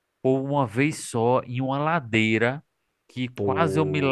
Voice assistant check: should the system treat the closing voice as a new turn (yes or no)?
no